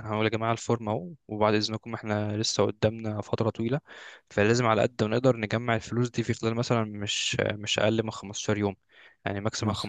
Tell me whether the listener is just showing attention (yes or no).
yes